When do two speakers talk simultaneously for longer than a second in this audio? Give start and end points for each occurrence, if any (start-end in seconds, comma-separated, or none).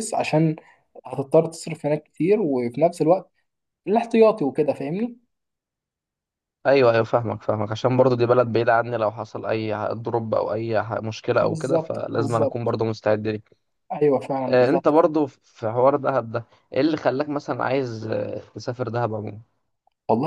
11.4-12.8